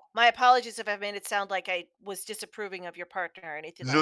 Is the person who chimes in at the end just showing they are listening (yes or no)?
no